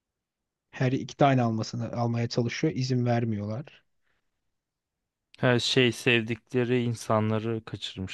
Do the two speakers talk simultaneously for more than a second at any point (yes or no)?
no